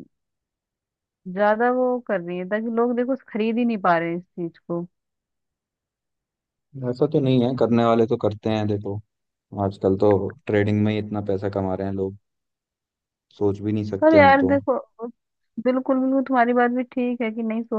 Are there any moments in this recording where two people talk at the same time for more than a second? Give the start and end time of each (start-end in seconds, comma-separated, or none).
none